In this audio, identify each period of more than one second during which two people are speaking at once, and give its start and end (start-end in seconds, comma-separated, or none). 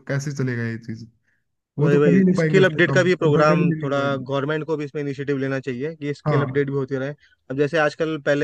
1.8-4.3